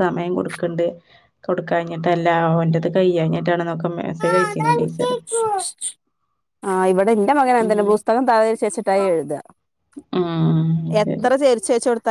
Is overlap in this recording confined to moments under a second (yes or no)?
yes